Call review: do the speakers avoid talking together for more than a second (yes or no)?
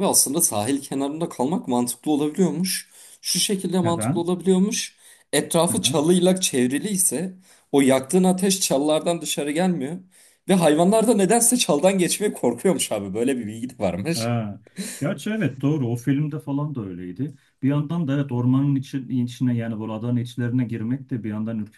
yes